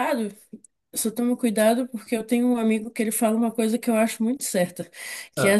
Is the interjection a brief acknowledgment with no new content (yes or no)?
yes